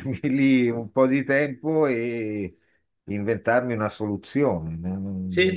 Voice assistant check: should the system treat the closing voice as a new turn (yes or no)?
yes